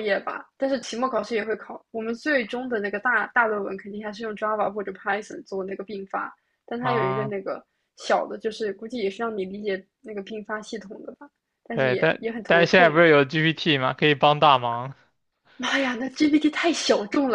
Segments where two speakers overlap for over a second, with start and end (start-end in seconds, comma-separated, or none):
11.7-13.0